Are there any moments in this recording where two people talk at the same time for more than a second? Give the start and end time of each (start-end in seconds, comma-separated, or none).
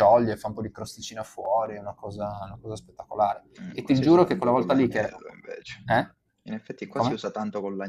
3.6-5.1